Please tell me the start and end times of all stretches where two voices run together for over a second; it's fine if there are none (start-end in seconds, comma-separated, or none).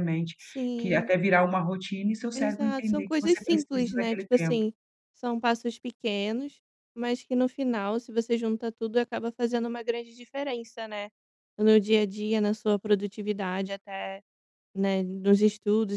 2.3-4.6